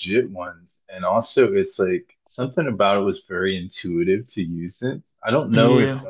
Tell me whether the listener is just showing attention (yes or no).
yes